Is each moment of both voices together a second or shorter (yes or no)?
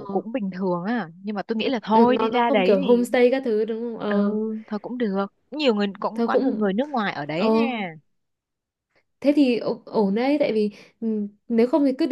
no